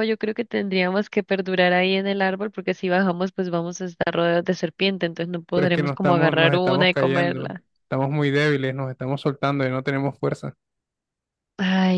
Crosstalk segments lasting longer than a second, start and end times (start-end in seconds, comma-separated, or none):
5.5-7.6